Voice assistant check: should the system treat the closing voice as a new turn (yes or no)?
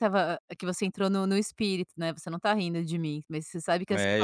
yes